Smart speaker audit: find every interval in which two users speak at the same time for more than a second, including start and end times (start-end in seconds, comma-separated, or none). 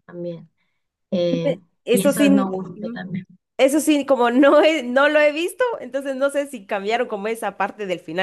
1.4-3.0